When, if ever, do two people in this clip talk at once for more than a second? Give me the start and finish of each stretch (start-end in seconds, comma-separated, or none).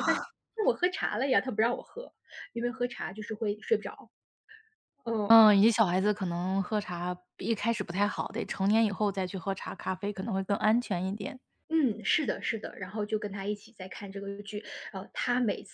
none